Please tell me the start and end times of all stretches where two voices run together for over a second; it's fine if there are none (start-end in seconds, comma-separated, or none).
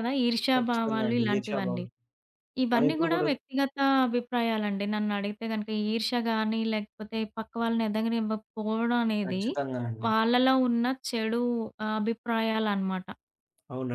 0.6-1.8